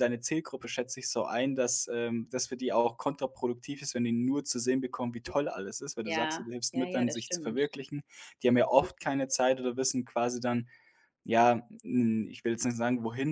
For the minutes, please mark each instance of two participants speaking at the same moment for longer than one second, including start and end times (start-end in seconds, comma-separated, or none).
6.0-7.6